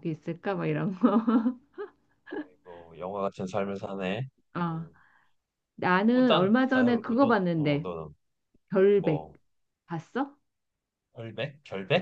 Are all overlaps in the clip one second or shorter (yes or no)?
no